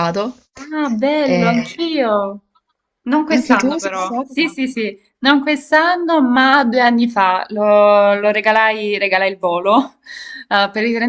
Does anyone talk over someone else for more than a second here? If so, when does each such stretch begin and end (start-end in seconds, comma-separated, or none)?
3.3-4.6